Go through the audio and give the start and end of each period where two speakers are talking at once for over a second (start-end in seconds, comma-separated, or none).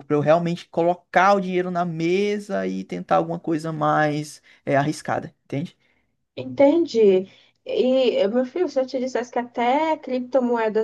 none